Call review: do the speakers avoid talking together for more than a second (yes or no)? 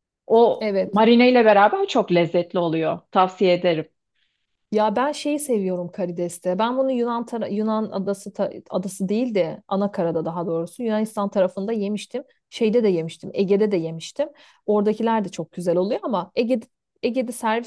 yes